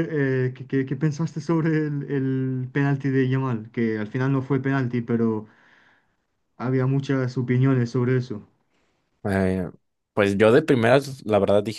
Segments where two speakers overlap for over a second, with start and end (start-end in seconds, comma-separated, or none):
none